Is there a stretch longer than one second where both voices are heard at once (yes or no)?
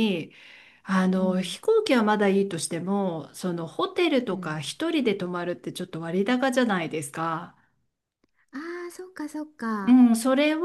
no